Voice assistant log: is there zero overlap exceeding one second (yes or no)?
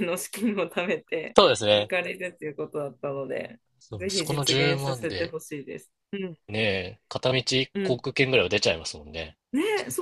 no